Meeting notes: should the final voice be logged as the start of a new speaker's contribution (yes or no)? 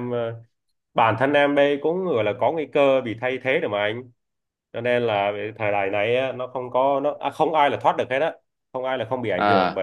no